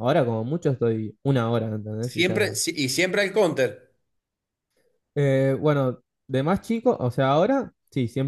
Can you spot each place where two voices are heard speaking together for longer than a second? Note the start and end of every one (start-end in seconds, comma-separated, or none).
none